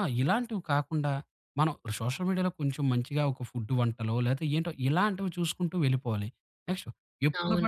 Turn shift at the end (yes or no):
no